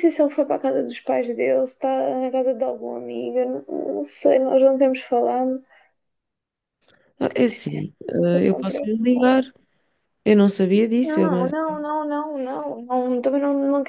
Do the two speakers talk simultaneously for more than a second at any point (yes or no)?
yes